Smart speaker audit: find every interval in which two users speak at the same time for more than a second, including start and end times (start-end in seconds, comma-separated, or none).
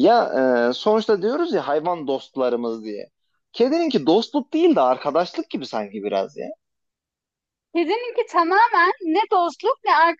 none